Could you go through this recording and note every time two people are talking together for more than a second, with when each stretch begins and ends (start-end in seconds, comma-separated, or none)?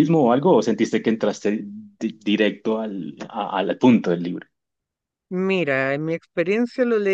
none